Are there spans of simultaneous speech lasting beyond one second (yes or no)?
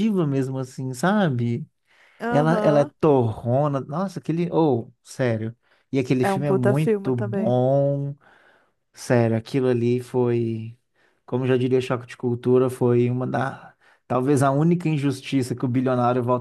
yes